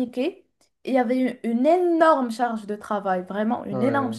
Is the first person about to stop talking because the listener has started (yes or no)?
no